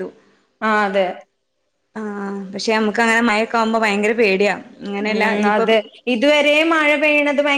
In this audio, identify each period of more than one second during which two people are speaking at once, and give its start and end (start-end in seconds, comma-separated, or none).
none